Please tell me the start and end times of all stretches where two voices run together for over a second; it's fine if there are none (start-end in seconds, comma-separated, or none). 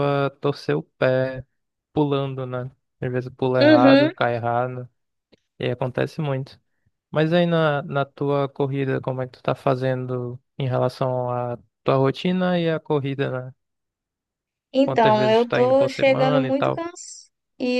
14.8-16.8